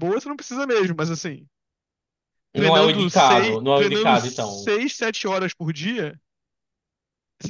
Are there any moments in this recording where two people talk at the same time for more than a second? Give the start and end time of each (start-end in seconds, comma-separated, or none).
2.5-4.7